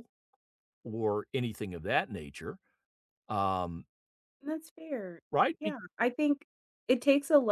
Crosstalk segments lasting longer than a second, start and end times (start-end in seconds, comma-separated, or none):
none